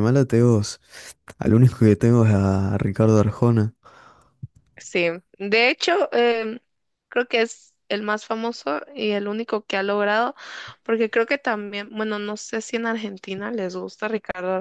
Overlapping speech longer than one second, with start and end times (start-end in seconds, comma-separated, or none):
none